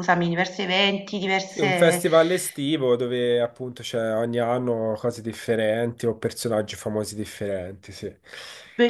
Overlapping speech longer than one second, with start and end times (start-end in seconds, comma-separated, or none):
none